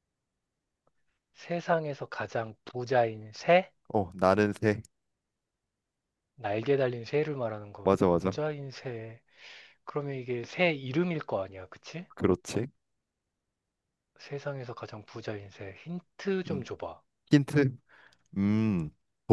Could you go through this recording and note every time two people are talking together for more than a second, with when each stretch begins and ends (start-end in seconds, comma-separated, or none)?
none